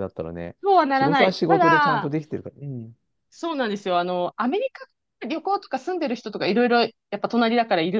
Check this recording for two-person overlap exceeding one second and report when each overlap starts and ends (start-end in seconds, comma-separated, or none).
0.9-2.1